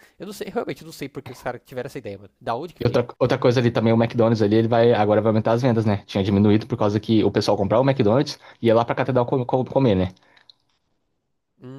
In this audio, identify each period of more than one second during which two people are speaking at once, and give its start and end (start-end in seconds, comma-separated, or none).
none